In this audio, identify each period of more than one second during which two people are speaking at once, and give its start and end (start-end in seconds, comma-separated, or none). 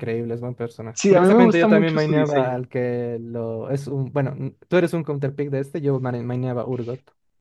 0.9-2.6